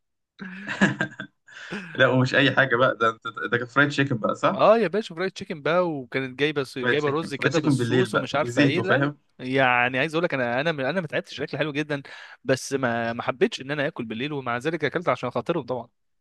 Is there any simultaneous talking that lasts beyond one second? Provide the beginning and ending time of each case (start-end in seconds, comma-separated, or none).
6.8-9.2